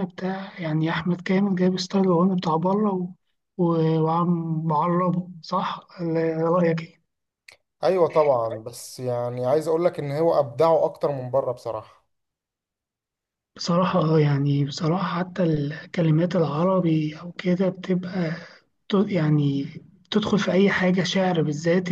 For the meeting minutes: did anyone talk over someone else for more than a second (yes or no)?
no